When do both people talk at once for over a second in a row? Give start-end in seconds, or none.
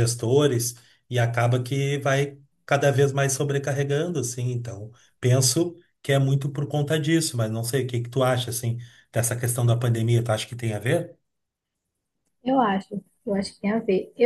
none